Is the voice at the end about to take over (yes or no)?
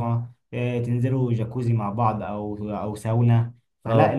no